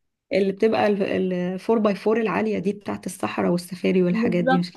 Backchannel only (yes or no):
no